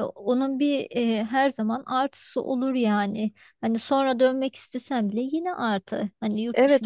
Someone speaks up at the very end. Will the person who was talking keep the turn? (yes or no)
no